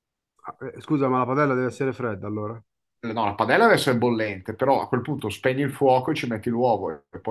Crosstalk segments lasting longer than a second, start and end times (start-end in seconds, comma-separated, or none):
none